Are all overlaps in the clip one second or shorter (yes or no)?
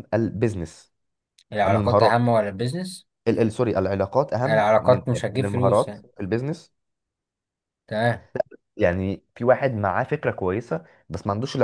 no